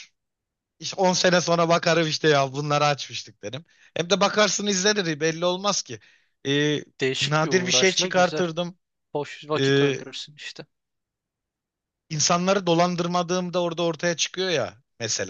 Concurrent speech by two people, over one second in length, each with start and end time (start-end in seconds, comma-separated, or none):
7.2-8.4